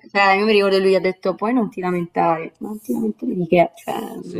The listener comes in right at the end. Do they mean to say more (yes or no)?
yes